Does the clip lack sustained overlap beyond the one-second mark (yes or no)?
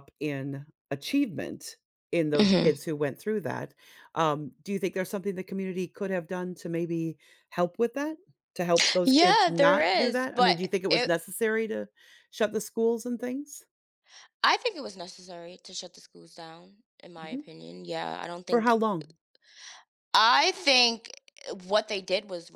no